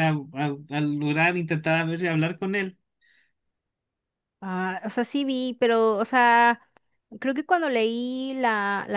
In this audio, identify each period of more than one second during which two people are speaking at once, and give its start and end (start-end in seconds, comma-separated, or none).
none